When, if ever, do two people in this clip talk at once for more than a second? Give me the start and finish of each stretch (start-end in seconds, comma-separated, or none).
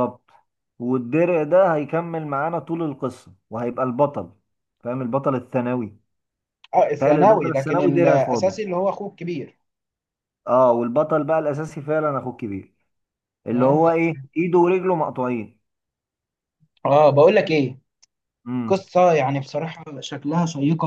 7.0-8.5